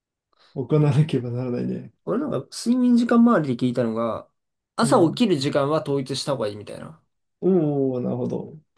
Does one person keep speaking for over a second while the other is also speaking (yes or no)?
no